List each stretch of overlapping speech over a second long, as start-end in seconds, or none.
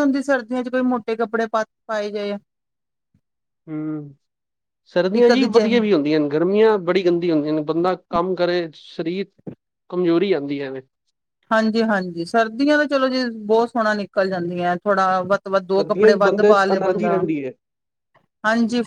15.6-17.1